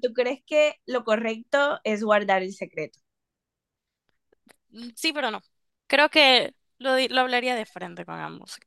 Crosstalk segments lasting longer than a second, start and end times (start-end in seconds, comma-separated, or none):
none